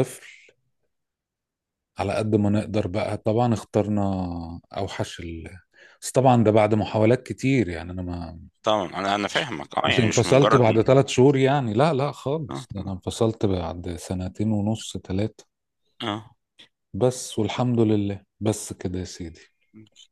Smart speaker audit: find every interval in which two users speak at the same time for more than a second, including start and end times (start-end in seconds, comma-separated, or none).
9.3-10.7